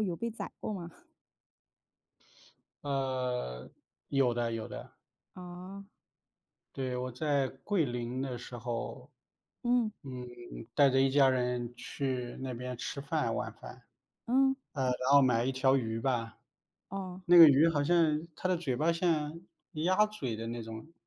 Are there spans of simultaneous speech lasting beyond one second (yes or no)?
no